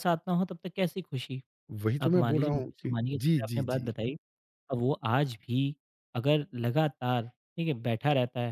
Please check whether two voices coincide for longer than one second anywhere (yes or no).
yes